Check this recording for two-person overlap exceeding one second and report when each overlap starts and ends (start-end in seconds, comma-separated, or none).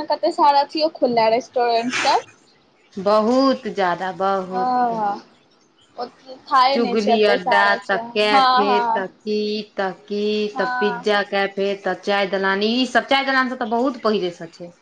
6.7-9.1